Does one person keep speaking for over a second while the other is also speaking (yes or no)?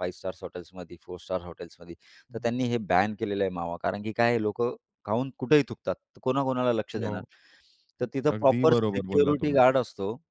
yes